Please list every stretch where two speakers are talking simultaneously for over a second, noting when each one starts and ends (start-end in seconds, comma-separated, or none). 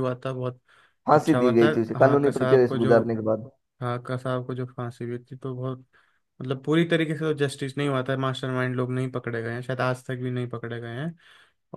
1.1-3.0